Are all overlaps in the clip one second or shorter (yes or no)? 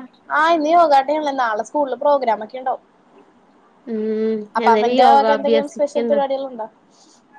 no